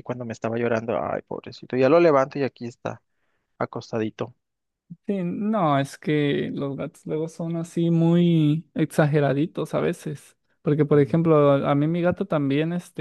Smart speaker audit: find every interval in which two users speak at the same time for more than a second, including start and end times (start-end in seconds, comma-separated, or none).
none